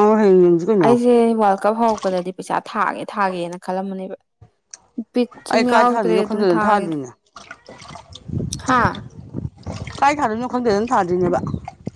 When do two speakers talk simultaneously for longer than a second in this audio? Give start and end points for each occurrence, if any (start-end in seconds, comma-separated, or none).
5.5-7.0